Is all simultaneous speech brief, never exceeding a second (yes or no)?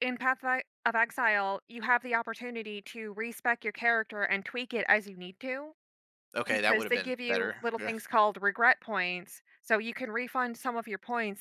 no